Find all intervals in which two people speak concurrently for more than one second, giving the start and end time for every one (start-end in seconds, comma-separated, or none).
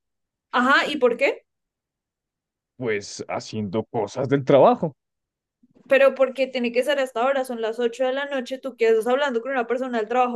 none